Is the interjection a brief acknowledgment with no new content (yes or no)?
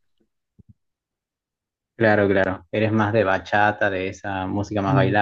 no